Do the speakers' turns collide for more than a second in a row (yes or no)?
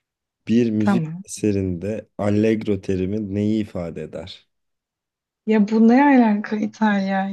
no